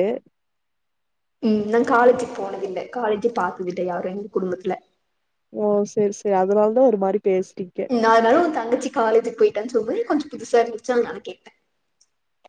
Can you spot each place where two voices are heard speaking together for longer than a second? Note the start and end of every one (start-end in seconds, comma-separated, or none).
none